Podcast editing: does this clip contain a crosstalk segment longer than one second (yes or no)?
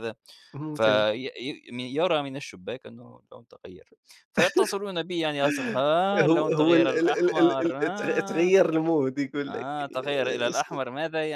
yes